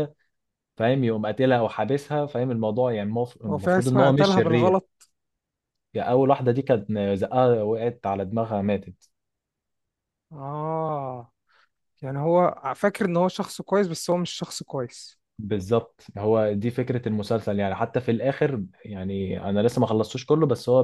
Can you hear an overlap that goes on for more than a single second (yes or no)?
yes